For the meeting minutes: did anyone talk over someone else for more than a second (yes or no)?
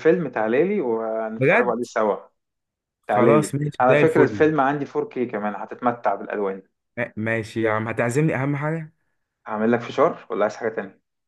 yes